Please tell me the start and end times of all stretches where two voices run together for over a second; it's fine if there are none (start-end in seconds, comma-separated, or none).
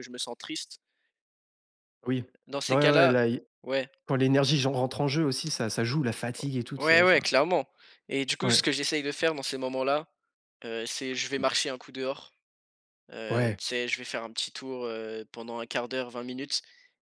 none